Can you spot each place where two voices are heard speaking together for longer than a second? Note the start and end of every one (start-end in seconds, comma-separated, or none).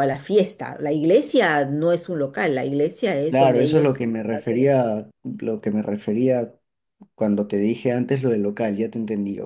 3.3-4.7